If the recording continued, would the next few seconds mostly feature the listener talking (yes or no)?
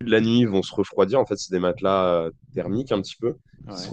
no